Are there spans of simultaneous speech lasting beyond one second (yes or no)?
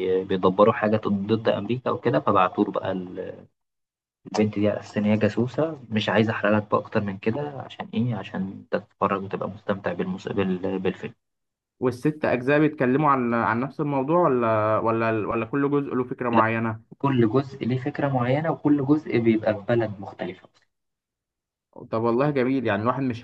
no